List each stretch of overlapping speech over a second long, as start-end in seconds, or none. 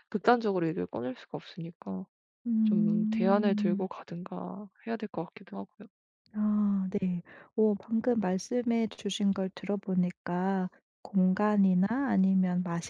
2.6-3.9